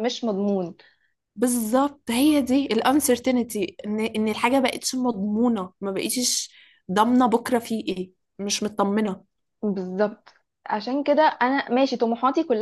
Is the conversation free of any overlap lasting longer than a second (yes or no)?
yes